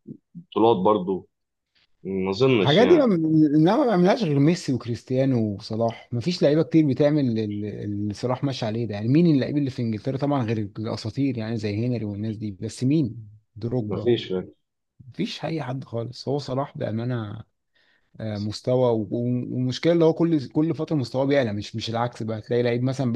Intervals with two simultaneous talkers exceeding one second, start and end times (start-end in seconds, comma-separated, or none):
none